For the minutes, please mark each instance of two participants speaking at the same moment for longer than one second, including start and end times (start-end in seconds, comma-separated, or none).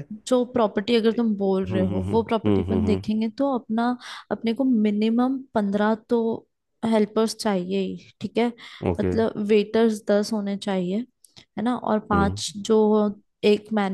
1.7-3.0